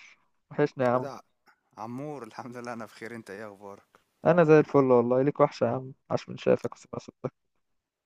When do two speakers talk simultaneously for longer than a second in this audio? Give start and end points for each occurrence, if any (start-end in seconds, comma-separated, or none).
none